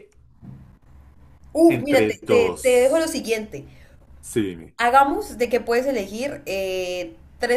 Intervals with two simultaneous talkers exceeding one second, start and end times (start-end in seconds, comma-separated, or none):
1.7-3.1